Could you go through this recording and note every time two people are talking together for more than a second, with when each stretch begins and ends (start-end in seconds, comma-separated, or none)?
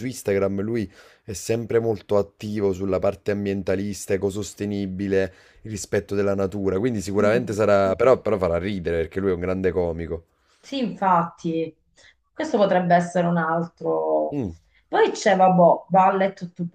none